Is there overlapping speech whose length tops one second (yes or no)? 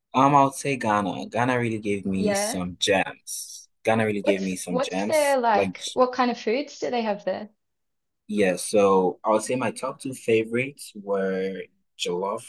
yes